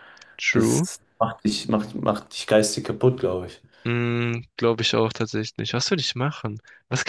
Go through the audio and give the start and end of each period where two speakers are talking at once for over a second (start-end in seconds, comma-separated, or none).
none